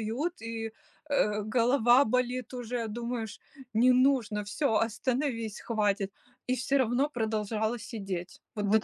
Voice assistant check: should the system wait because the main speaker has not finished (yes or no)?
no